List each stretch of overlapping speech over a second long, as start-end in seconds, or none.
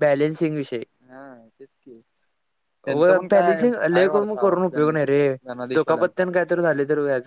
2.9-5.0